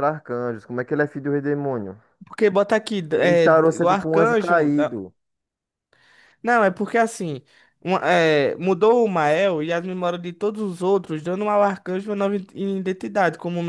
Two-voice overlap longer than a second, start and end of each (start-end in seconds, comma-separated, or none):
3.1-4.7